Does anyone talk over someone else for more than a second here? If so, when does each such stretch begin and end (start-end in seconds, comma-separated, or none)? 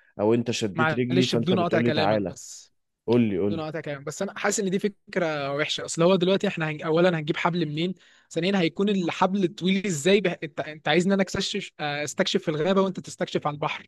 0.7-2.3